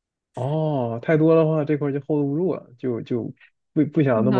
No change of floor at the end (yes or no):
no